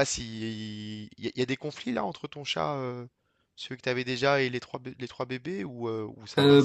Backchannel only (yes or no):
no